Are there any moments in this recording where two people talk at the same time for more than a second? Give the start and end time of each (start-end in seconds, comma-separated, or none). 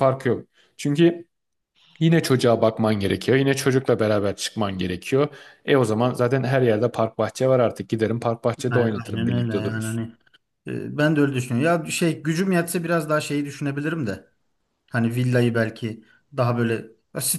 8.7-10.0